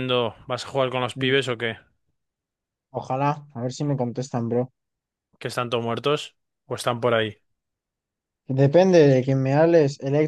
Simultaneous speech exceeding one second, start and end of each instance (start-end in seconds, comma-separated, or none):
none